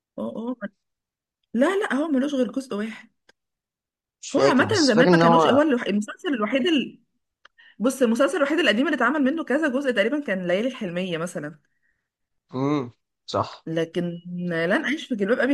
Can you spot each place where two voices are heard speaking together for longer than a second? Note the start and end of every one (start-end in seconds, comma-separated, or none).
4.3-5.6